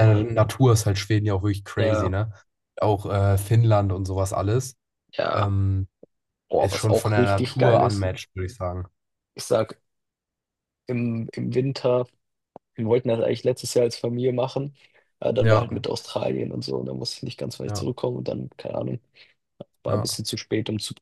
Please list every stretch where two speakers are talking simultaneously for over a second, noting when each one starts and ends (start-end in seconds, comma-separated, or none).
6.6-8.1